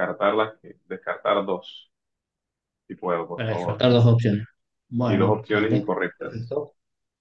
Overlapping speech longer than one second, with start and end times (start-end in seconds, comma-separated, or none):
5.0-6.5